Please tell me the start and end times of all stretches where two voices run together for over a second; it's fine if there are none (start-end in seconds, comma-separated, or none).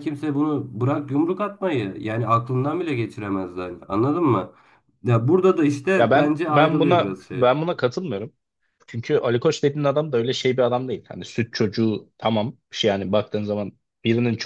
6.0-7.5